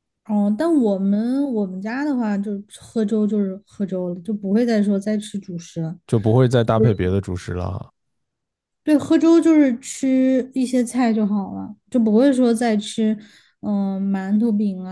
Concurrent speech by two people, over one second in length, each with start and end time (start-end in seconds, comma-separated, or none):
none